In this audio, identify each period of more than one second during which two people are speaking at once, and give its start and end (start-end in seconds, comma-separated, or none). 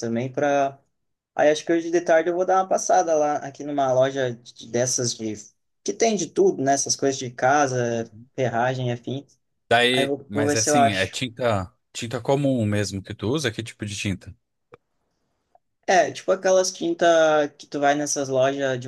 9.9-11.2